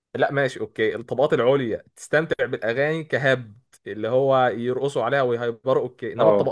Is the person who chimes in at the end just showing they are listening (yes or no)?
yes